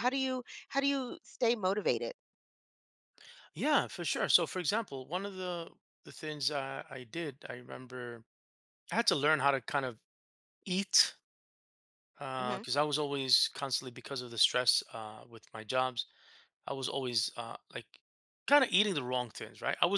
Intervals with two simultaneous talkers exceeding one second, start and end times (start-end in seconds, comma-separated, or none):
none